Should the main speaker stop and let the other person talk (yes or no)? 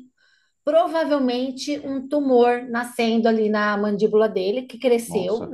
no